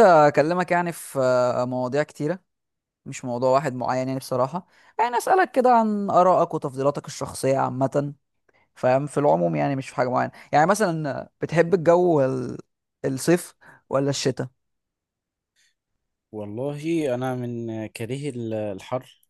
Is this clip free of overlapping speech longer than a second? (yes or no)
yes